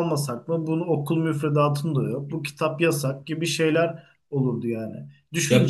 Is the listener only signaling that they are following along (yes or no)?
yes